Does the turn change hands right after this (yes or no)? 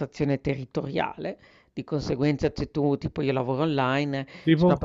no